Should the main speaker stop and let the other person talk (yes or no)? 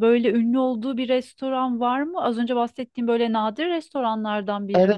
yes